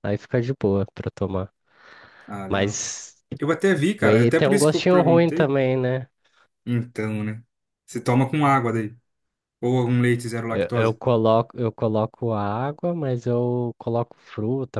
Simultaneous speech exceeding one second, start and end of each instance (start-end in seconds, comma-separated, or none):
4.0-5.5